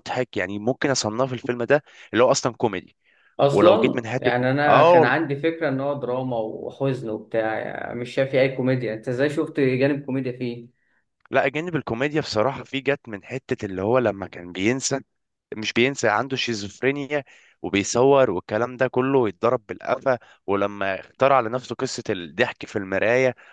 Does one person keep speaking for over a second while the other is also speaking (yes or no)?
yes